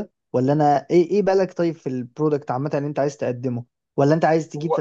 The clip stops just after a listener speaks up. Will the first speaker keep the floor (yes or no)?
yes